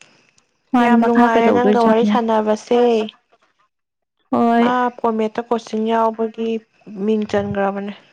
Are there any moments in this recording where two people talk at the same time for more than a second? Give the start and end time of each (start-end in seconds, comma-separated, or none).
0.8-2.1